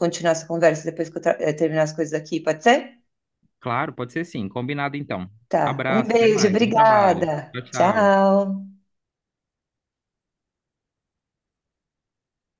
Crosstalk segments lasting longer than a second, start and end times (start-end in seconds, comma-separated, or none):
5.7-8.1